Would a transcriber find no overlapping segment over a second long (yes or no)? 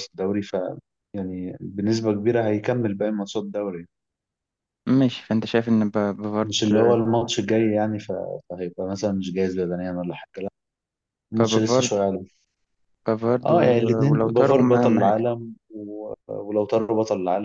no